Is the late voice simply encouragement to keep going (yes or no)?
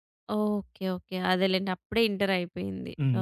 no